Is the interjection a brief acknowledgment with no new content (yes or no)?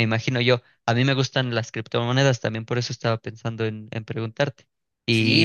no